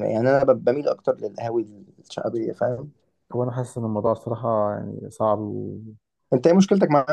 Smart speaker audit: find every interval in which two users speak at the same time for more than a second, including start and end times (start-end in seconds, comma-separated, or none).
none